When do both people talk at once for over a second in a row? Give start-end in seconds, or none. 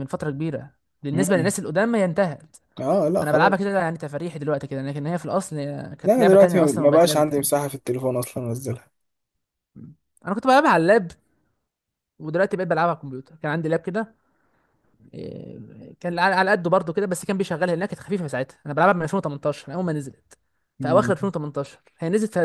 6.0-7.7